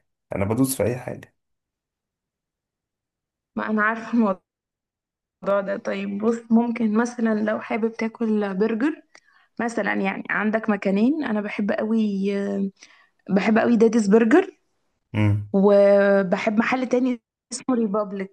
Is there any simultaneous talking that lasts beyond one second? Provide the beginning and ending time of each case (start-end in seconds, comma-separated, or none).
none